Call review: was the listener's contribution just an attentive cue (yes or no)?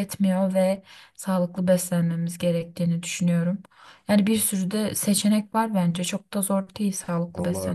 no